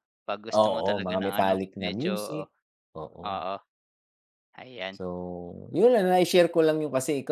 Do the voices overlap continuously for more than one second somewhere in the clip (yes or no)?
yes